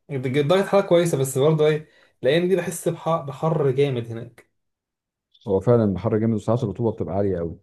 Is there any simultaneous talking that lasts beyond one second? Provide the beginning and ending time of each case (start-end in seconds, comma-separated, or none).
none